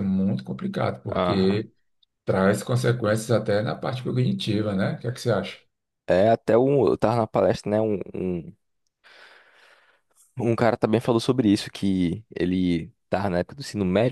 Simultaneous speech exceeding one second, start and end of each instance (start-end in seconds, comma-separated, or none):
none